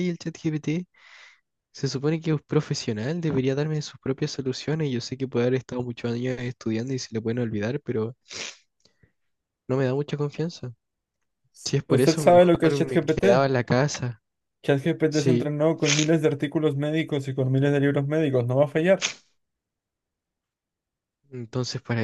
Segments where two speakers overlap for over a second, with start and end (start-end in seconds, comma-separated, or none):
11.9-13.2